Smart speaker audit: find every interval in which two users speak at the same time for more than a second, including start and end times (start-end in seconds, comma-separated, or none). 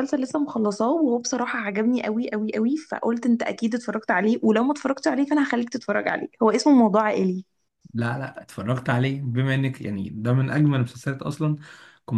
none